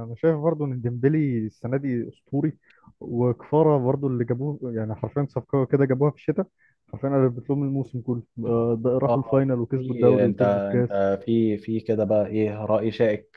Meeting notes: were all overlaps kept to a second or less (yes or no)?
no